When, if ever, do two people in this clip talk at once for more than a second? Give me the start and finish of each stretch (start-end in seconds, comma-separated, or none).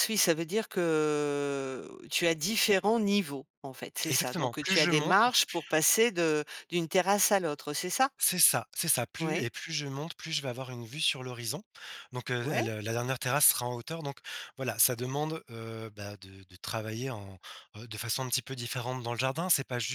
4.1-5.5